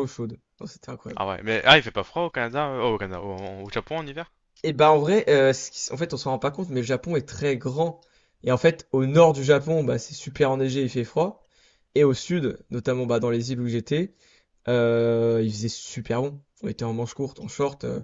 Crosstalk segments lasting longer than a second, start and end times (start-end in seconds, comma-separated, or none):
none